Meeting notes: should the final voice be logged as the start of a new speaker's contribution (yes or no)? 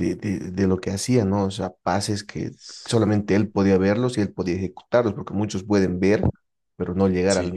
no